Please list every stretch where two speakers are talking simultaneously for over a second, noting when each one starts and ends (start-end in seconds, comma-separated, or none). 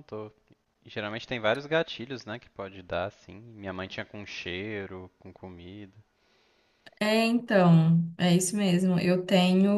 none